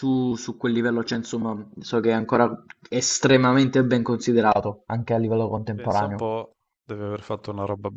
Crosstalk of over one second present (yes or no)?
no